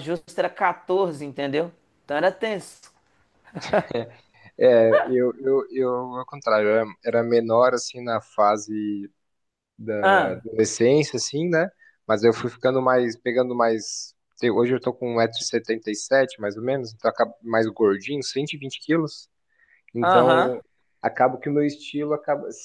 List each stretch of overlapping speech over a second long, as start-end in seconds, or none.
none